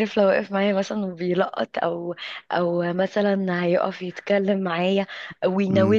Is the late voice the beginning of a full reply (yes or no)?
no